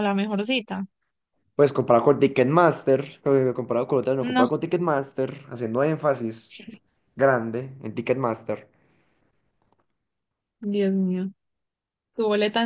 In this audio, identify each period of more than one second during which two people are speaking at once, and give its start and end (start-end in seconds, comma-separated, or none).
none